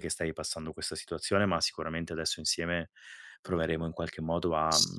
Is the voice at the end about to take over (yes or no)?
no